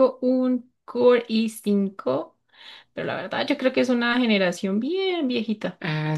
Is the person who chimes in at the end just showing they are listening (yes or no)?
no